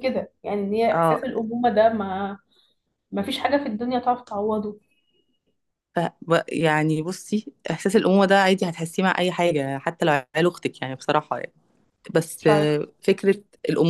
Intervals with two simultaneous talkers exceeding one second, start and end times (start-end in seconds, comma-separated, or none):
none